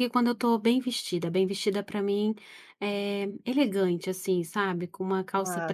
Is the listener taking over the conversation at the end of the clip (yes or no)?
no